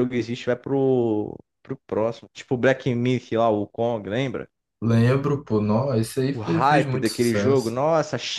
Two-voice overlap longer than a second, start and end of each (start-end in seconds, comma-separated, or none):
6.3-7.7